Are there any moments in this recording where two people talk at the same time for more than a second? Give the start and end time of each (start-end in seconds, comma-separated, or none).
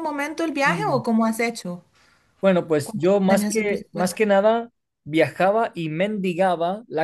2.8-4.2